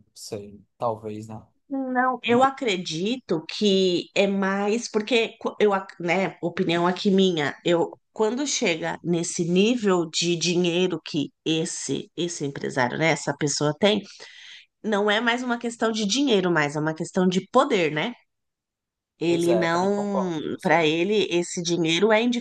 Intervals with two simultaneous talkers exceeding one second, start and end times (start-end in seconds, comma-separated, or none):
19.3-20.7